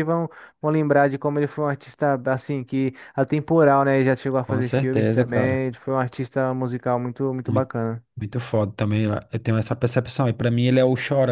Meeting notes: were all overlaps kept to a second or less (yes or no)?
no